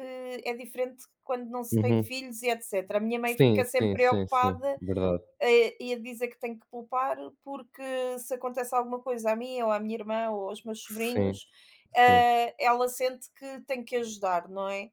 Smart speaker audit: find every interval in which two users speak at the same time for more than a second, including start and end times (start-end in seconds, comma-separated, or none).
3.2-4.8